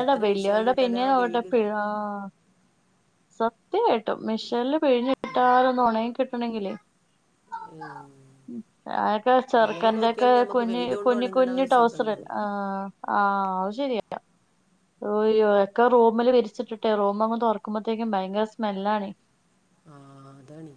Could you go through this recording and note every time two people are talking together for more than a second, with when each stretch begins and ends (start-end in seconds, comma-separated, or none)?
10.0-12.4